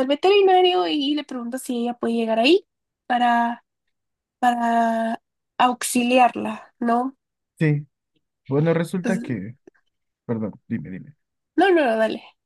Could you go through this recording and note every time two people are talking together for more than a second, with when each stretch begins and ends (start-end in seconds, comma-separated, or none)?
none